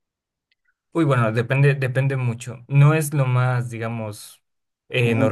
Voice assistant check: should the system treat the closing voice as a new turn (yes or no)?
no